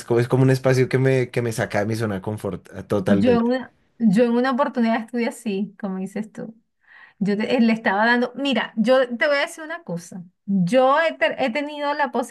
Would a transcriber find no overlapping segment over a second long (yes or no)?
yes